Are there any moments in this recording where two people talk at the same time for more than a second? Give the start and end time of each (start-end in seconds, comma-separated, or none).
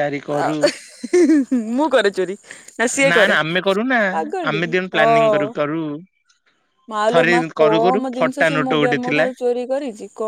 7.1-9.2